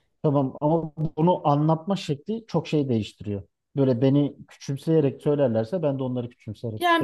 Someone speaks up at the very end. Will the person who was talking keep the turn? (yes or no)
no